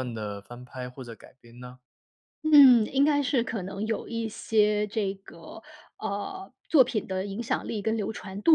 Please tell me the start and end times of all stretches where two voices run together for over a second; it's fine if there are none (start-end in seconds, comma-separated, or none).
none